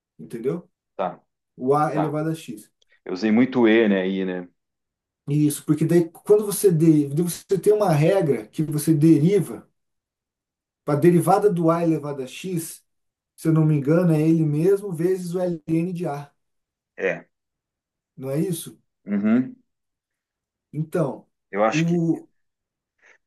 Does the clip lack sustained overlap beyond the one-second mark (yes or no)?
yes